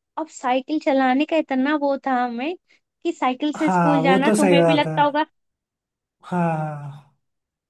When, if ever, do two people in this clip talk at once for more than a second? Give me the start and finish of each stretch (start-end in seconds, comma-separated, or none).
3.6-4.9